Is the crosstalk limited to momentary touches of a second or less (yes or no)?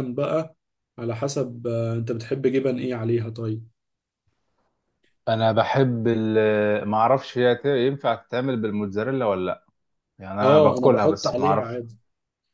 no